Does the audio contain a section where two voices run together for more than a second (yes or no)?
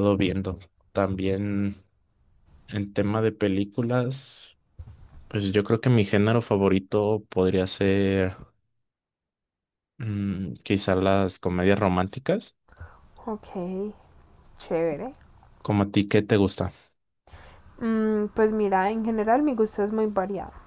no